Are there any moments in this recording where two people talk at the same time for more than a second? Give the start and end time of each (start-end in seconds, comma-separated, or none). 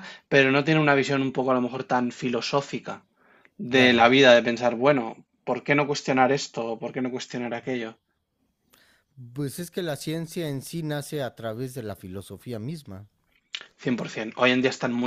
none